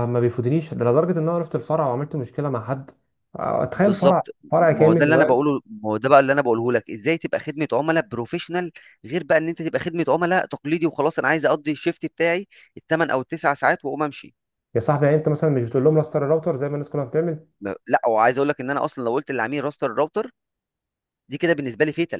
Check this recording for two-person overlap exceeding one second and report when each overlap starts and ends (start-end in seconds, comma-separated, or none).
3.7-5.5